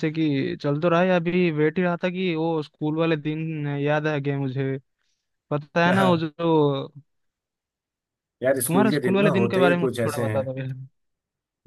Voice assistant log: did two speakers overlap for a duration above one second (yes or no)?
yes